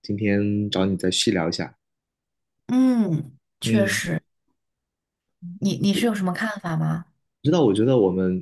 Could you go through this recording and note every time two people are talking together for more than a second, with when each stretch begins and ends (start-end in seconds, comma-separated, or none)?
none